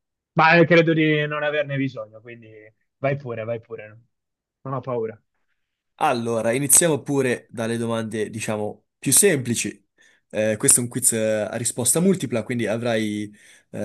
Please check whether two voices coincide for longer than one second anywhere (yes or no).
no